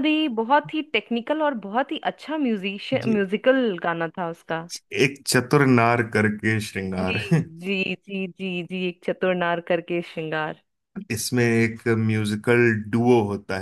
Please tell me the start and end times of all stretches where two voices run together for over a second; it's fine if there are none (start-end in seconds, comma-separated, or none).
none